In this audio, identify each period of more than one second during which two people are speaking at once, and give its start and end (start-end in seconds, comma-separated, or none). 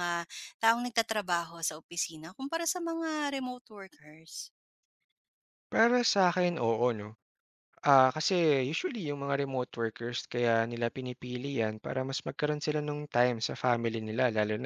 none